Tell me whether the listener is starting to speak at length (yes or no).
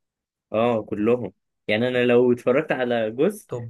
no